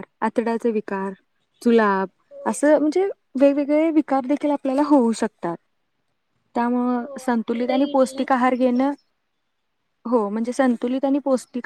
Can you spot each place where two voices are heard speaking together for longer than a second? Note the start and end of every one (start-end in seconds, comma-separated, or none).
7.0-8.8